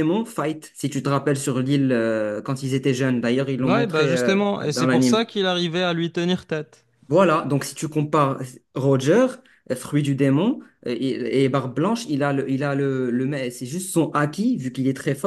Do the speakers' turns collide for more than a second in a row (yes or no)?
yes